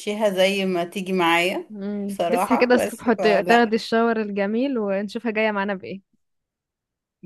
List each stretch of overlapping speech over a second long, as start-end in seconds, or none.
2.1-3.7